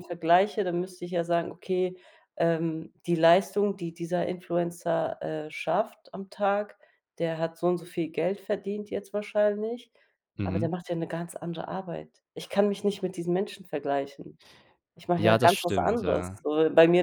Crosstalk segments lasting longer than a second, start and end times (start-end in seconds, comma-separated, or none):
15.2-16.4